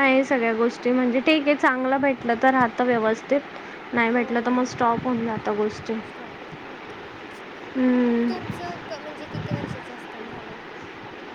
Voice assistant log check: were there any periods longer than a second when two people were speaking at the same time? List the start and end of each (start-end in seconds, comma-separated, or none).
none